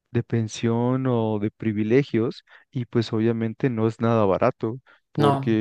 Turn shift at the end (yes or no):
no